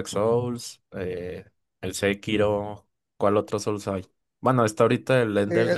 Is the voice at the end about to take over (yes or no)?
yes